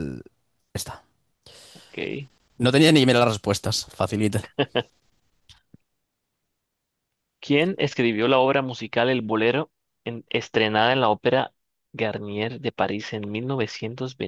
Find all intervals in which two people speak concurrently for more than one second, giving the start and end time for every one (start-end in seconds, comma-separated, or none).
none